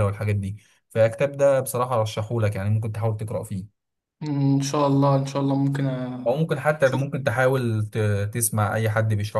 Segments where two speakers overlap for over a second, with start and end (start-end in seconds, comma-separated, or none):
none